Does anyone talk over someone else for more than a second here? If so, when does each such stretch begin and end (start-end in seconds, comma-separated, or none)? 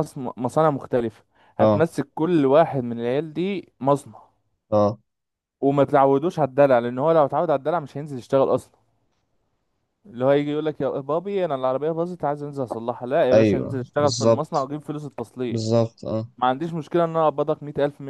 13.3-14.7